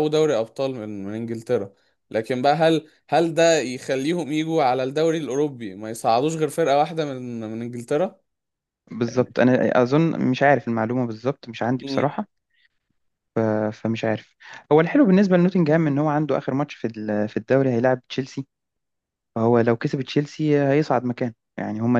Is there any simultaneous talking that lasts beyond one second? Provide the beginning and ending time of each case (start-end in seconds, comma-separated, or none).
none